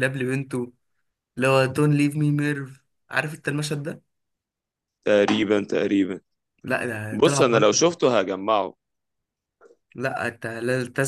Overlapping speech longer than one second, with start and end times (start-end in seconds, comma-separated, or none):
none